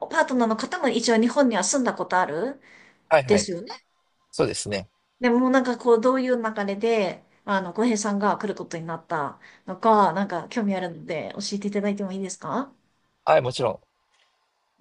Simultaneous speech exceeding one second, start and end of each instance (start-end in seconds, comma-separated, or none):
none